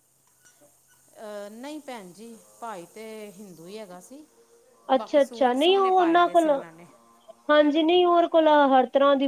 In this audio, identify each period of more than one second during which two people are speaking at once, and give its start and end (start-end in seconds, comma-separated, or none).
5.0-6.5